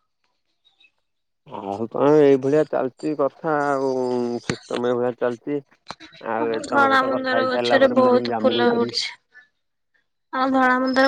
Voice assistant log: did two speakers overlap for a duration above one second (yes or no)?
yes